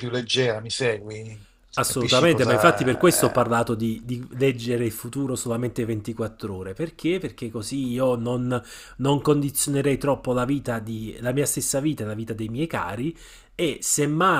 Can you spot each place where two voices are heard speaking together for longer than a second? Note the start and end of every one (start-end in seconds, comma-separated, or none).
1.8-3.6